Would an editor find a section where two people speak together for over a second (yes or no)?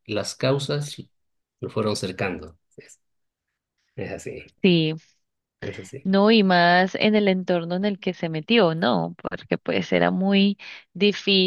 no